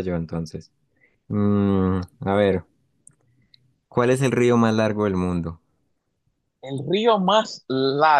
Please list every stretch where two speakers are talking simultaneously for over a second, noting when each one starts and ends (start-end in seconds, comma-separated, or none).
none